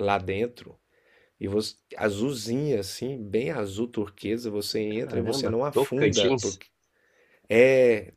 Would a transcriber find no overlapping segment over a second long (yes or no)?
no